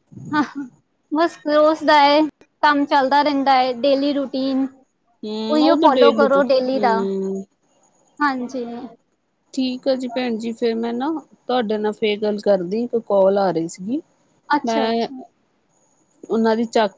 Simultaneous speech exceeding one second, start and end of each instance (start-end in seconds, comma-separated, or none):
5.5-7.0